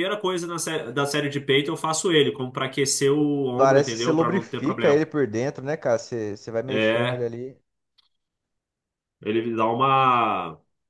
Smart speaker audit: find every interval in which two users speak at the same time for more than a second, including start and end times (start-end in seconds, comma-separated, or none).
3.5-5.0